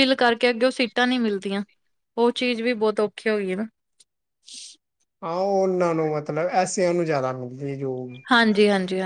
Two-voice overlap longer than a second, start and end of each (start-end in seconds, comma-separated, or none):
none